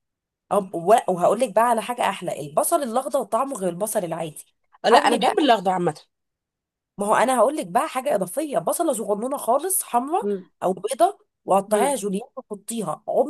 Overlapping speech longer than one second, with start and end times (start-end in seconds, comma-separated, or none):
none